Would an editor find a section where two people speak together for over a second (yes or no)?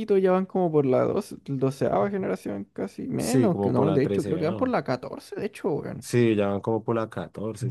yes